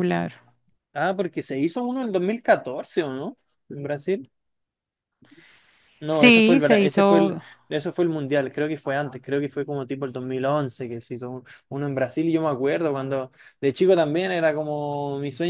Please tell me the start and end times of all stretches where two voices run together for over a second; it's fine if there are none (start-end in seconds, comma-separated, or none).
6.0-7.4